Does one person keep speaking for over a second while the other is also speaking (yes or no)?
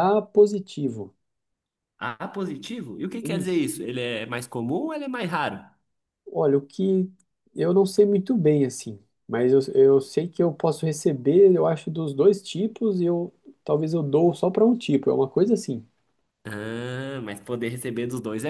no